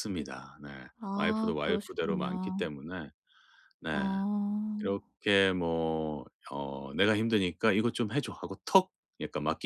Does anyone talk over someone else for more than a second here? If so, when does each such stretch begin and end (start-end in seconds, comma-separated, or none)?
1.2-2.7